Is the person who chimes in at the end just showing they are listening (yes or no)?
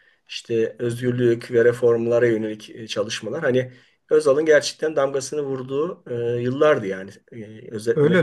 no